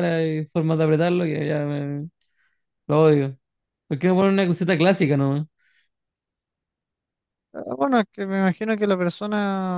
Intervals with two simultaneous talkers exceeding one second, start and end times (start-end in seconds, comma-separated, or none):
none